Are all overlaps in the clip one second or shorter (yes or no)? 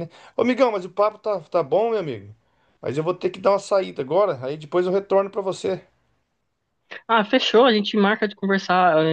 yes